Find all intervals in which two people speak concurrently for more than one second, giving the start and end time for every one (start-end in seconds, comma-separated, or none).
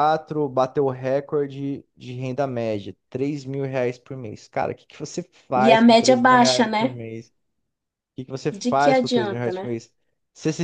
5.7-7.0, 8.5-9.8